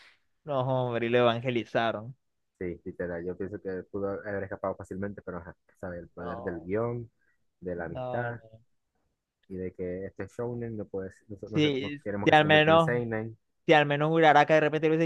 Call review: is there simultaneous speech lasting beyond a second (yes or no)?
yes